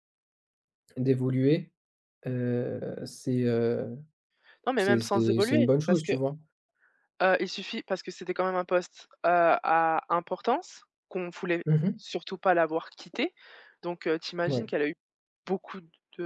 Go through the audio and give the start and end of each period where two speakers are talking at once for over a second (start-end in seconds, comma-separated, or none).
4.8-6.1